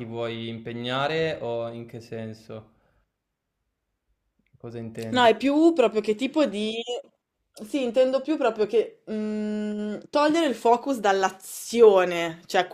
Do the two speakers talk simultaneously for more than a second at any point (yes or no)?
no